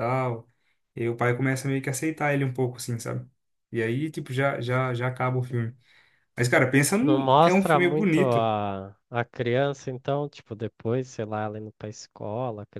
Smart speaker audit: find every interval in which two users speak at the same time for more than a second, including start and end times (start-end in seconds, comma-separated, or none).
7.0-8.5